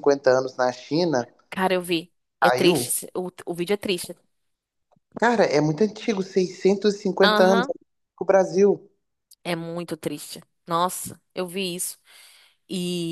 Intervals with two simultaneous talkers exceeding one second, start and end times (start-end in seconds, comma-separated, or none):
none